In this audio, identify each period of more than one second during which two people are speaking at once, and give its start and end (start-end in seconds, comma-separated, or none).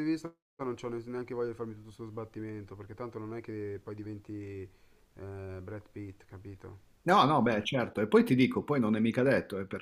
none